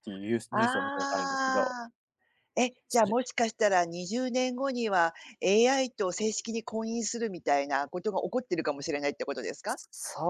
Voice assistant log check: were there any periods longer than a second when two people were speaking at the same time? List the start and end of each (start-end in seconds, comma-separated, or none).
0.5-1.8